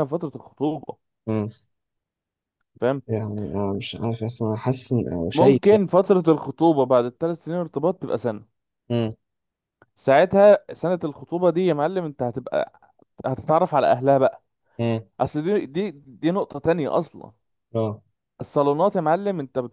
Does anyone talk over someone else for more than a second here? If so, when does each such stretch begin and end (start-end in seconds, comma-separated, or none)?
none